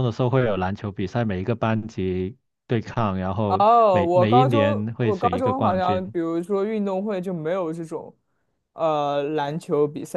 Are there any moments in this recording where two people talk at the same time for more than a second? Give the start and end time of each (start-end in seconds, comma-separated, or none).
3.6-6.1